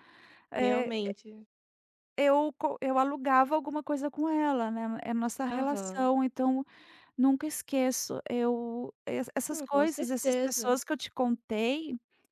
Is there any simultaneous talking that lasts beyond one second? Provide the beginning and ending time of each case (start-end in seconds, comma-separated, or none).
9.5-10.8